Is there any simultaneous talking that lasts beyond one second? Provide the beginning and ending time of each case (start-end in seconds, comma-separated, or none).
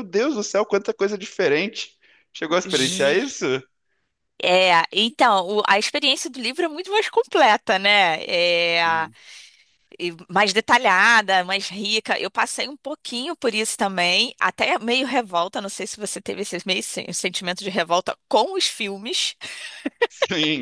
none